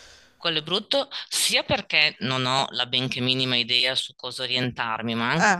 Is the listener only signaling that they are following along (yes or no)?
yes